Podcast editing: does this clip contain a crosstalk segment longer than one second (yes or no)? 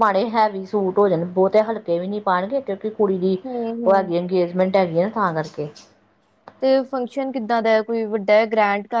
no